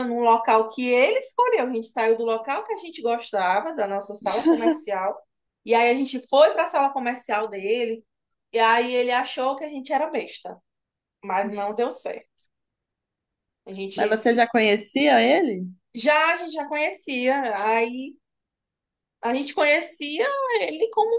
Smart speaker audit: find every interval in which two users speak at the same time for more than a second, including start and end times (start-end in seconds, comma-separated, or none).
none